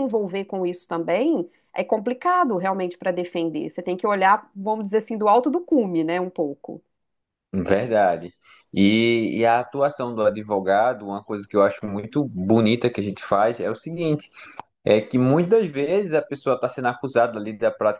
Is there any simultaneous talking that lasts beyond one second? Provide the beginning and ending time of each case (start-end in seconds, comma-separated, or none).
none